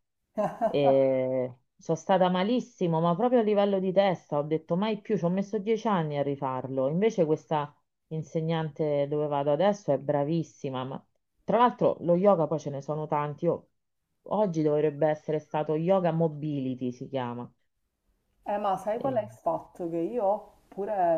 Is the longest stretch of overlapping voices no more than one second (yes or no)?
yes